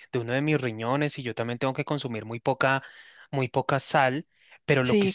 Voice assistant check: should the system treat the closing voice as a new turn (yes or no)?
no